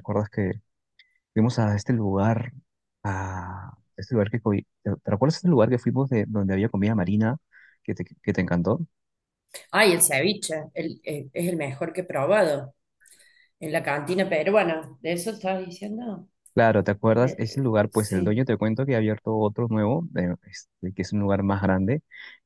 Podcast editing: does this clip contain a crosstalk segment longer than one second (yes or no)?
yes